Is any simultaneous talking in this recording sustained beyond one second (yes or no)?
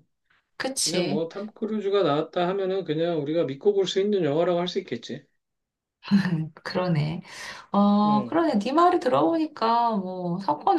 no